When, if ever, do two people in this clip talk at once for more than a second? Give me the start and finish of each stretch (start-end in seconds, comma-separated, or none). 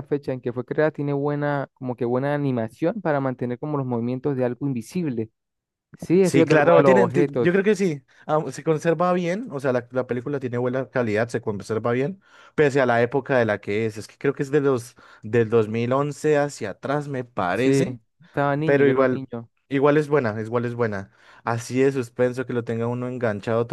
6.2-7.6